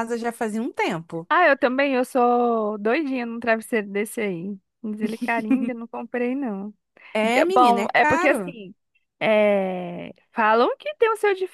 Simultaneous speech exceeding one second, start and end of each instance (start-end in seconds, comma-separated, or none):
7.3-8.6